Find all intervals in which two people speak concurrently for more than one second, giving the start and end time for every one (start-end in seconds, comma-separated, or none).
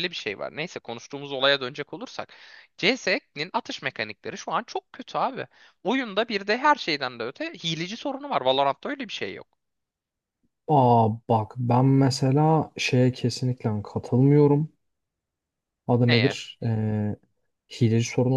none